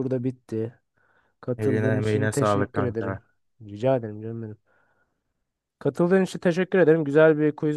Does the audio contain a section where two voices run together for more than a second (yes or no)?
yes